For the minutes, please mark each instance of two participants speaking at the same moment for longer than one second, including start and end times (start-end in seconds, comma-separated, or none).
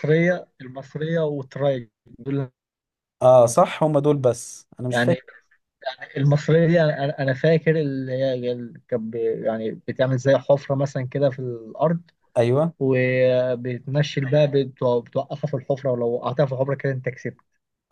none